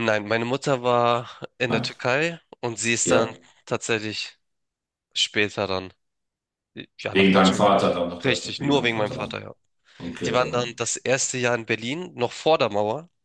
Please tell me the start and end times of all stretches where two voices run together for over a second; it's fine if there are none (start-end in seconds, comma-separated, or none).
7.1-9.4